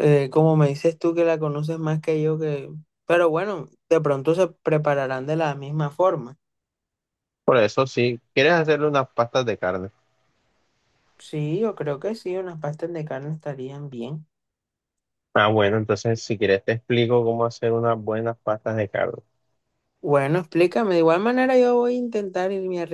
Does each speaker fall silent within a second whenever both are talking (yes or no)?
yes